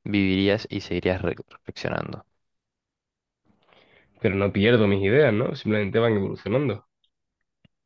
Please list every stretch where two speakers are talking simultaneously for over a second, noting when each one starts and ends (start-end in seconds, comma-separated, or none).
none